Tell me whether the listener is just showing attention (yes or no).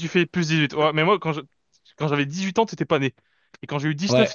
yes